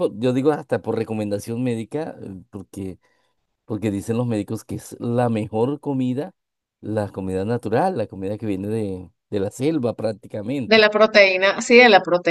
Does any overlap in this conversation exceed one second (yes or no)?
no